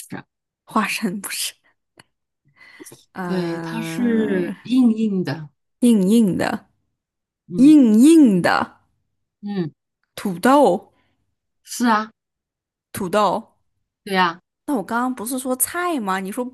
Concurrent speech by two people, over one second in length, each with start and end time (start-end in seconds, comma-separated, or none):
3.2-4.5